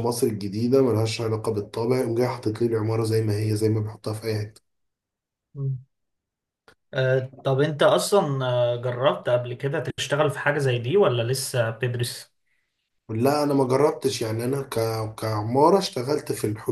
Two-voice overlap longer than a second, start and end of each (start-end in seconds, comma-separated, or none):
none